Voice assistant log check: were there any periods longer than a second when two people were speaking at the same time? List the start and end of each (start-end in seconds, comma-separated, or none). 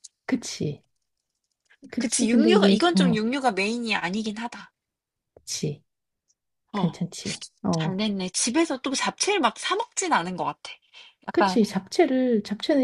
2.0-3.2